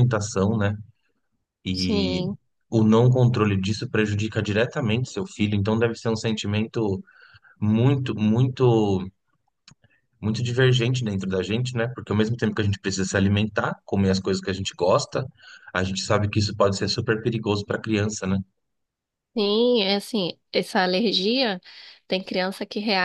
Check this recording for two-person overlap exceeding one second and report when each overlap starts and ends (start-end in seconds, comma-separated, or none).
none